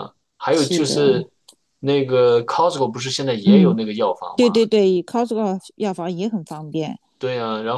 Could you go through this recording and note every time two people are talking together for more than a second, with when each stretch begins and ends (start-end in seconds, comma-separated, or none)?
none